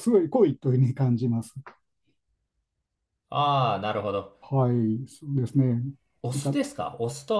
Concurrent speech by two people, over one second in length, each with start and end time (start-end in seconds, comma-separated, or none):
none